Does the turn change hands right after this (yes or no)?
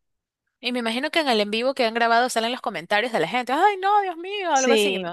yes